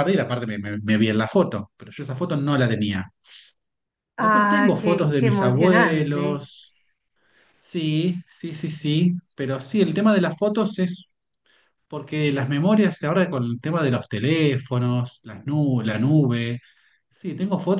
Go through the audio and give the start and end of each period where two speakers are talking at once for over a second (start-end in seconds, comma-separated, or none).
4.2-6.5